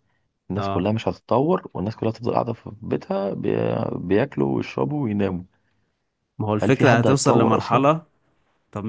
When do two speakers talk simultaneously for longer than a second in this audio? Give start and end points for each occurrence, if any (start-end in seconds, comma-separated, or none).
6.6-7.9